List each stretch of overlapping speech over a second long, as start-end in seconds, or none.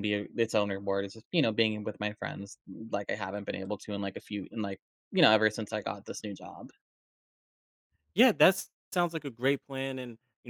none